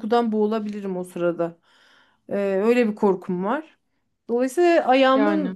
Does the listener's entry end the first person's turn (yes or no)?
no